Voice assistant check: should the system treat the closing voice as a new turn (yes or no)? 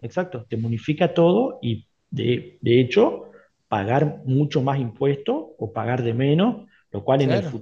no